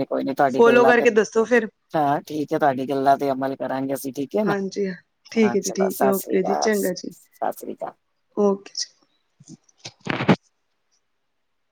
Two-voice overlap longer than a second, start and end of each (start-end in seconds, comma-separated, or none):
5.4-7.1